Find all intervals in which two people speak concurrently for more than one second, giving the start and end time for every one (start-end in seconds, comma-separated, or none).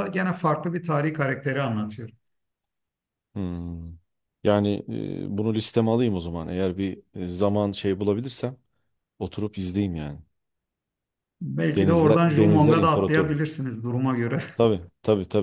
11.8-13.4